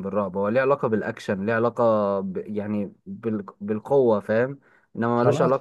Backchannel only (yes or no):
no